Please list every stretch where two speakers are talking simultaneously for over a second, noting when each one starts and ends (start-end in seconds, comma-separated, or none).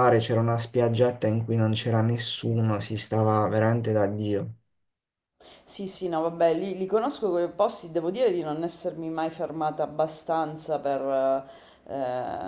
none